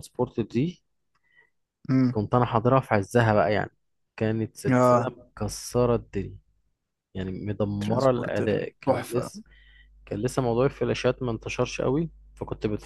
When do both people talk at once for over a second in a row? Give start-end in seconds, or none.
7.8-9.3